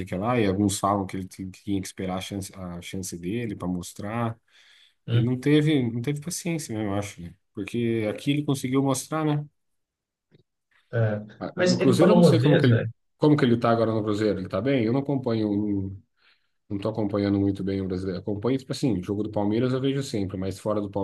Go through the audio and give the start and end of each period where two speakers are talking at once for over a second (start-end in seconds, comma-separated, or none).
11.6-12.9